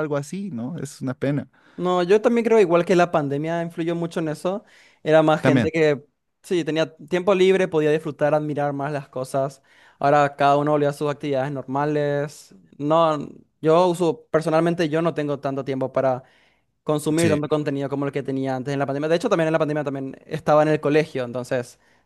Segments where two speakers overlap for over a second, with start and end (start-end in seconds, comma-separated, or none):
none